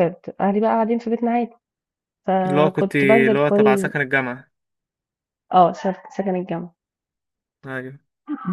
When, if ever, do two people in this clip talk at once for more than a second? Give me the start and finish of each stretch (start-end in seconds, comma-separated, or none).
2.5-3.9